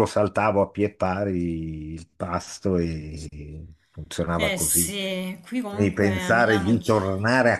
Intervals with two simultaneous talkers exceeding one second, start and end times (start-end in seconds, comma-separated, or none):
5.7-6.9